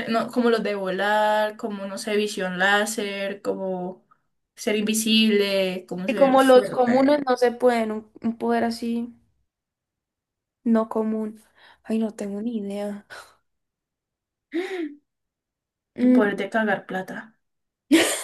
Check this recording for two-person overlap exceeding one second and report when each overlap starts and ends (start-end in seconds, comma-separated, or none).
6.1-7.3